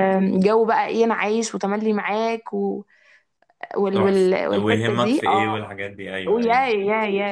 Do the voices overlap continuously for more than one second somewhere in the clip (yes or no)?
yes